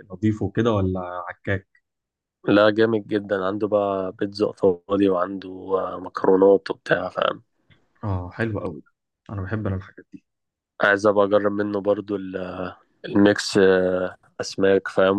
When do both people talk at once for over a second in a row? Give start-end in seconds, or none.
none